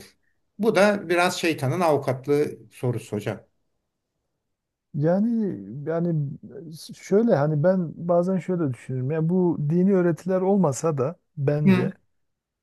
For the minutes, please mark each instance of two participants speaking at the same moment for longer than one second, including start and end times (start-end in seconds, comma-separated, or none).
none